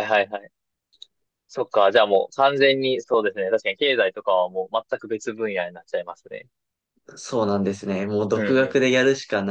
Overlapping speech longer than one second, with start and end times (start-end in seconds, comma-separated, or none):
none